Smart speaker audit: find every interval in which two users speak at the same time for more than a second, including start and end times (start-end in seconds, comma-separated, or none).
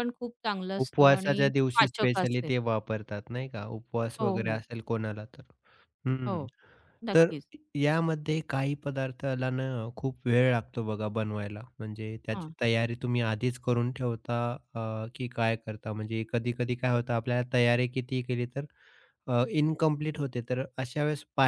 0.8-2.5